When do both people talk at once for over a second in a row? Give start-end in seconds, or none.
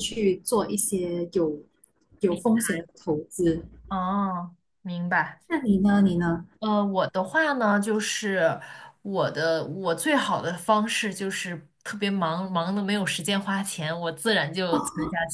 none